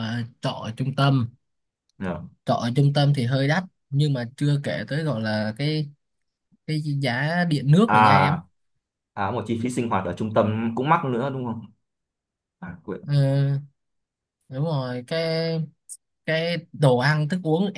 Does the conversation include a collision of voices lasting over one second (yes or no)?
no